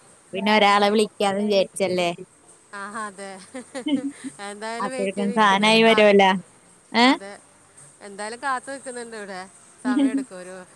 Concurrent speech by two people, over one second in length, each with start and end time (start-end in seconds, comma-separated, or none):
4.8-6.3